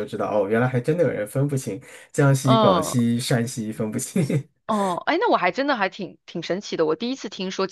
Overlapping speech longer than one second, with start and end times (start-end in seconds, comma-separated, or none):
none